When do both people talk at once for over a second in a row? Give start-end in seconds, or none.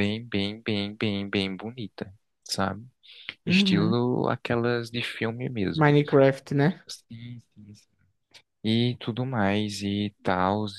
none